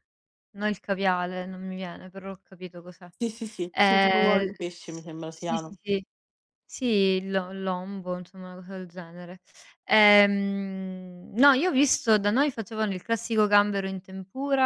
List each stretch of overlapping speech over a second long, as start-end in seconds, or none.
3.7-5.8